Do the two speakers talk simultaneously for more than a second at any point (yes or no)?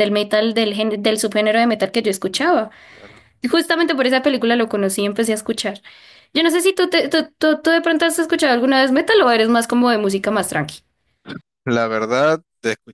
no